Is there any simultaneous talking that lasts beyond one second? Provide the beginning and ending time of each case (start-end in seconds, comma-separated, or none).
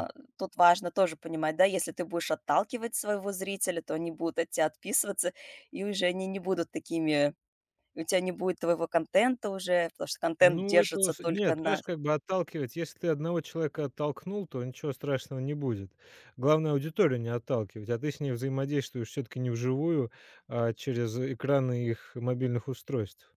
10.4-11.8